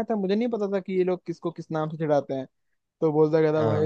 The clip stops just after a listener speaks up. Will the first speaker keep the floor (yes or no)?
yes